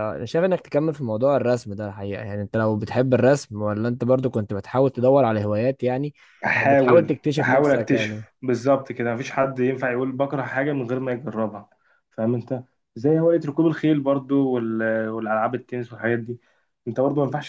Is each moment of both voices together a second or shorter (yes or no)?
no